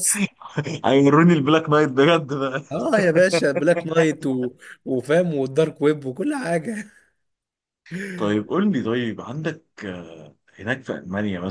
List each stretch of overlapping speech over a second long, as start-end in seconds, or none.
none